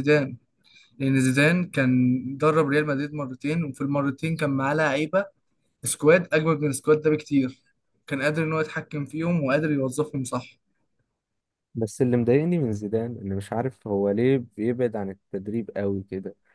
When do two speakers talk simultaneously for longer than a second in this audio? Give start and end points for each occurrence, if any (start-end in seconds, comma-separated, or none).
none